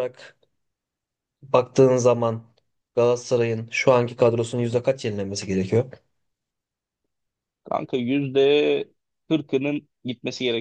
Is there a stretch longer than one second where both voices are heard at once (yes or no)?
no